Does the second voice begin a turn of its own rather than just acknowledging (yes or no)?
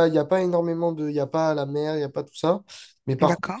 no